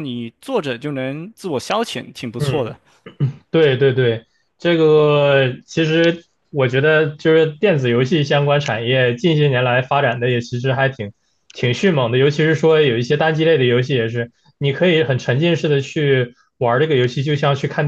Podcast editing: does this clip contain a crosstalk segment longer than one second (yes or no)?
no